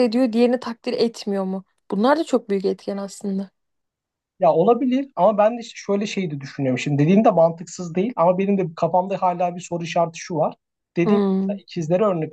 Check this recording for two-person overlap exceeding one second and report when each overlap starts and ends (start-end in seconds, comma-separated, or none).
none